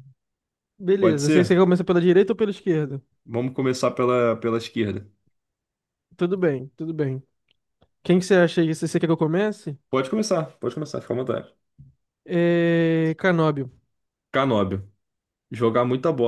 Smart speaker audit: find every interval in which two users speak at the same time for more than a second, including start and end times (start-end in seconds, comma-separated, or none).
none